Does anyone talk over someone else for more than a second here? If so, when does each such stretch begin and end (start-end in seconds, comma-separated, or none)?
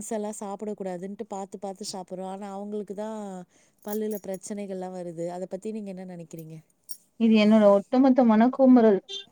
none